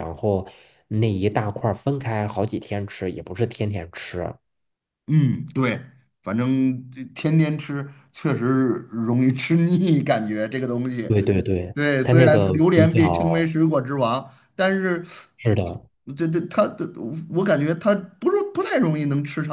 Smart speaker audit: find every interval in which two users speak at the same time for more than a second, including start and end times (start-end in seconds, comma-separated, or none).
11.7-13.5